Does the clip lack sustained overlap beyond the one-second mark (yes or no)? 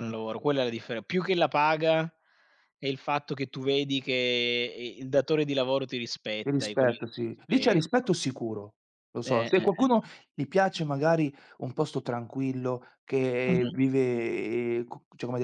no